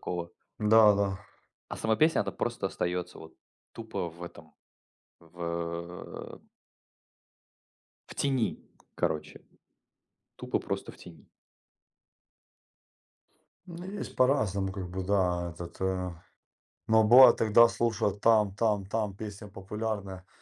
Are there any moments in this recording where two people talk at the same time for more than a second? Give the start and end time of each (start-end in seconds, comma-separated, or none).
none